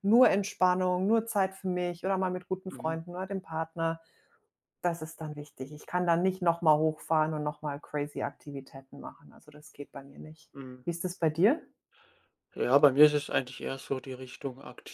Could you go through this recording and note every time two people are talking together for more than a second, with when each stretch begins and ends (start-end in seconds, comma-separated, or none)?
none